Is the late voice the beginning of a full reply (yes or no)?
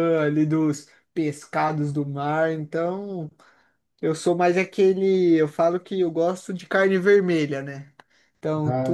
no